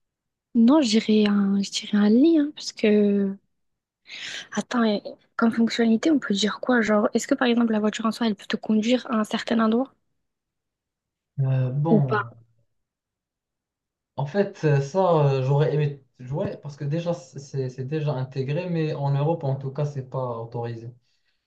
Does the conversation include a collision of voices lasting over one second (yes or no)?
no